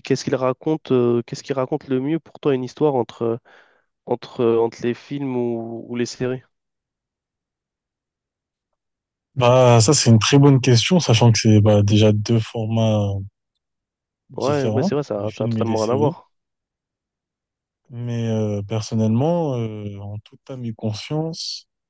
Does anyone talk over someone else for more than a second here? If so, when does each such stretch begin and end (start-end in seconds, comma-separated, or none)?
14.4-16.1